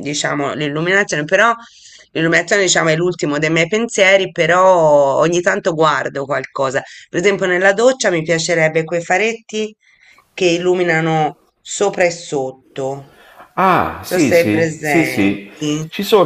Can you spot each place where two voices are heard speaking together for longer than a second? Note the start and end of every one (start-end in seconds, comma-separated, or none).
14.1-15.5